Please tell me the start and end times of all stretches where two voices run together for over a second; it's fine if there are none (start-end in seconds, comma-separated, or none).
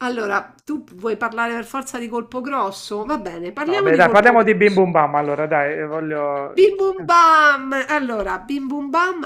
3.0-4.8